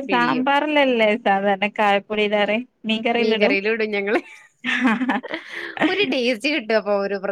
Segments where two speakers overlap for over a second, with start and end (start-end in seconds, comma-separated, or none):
none